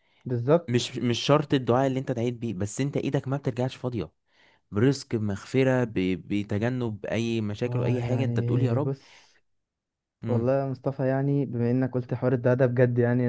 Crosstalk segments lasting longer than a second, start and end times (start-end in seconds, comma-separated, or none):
7.7-8.9